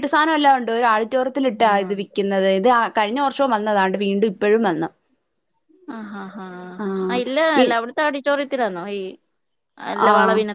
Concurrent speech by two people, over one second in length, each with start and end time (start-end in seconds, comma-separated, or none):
none